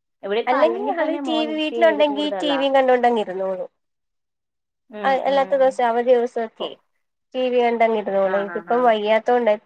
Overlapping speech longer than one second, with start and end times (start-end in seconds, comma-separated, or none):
0.5-2.6